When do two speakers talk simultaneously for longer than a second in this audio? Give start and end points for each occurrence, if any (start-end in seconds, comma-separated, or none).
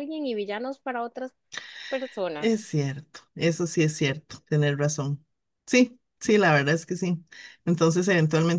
none